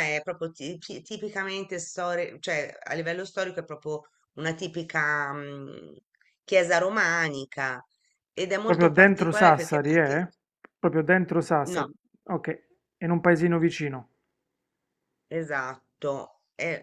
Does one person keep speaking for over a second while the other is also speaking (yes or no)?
yes